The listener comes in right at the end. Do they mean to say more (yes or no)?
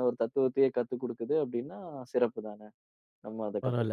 yes